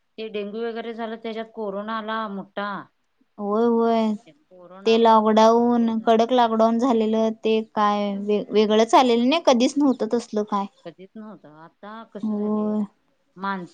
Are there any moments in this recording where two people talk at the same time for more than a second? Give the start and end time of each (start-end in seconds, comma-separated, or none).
4.9-6.2